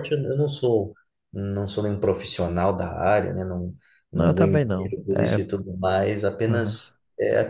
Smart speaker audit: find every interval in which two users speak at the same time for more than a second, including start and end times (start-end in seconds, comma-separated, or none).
4.1-5.5